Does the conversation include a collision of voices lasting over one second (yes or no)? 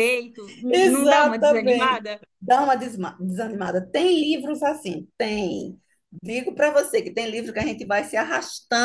yes